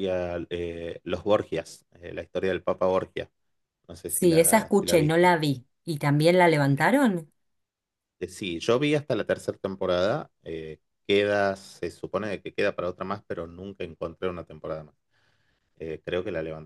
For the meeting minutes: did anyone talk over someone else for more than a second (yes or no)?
yes